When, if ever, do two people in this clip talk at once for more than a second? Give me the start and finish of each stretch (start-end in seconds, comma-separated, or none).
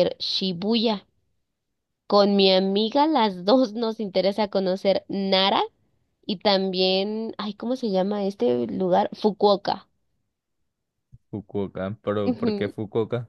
none